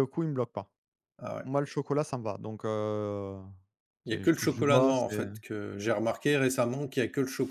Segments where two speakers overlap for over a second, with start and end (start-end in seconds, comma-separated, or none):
4.1-5.3